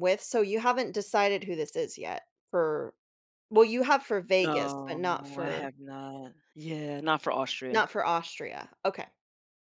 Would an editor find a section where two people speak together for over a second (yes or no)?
yes